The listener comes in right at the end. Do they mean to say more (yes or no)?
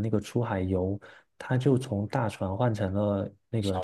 no